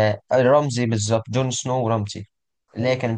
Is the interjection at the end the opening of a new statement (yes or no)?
no